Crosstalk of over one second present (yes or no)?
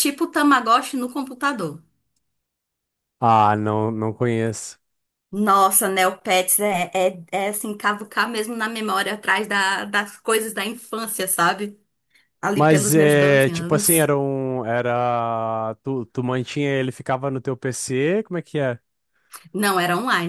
yes